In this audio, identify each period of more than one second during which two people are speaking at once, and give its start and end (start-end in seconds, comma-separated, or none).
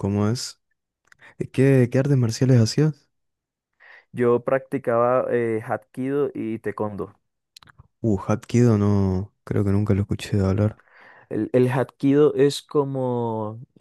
none